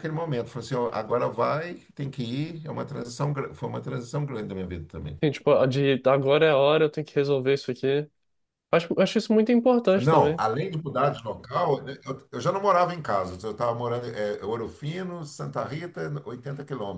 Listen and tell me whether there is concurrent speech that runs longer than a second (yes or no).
no